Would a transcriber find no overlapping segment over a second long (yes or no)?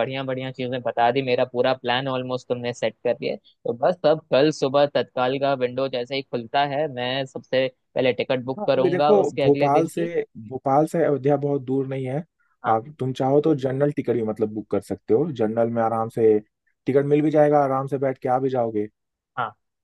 no